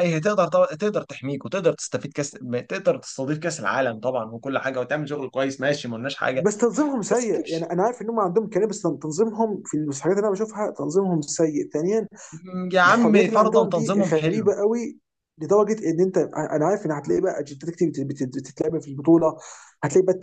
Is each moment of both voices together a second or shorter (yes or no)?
no